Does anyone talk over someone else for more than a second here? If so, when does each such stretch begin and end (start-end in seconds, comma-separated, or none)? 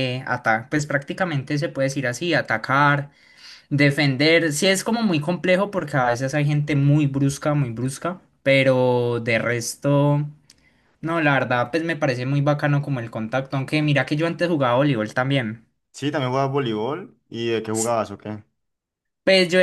none